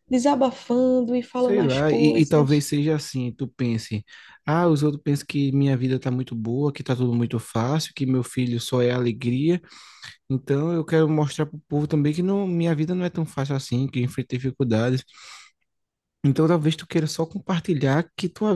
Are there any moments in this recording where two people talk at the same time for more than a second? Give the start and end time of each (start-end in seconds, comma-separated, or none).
1.4-2.7